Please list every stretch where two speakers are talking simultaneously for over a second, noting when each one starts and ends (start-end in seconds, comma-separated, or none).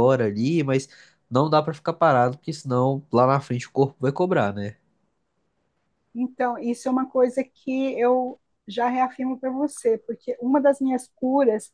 none